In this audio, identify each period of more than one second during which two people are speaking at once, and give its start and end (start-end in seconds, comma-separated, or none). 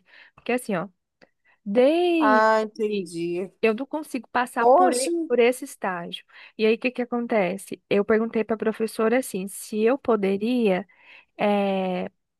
none